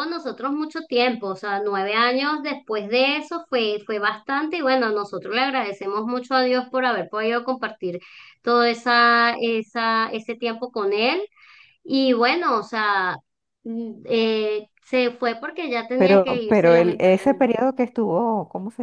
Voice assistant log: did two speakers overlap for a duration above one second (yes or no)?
yes